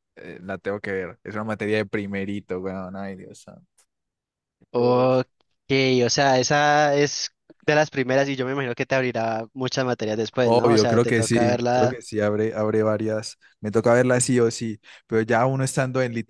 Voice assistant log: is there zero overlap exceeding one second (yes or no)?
no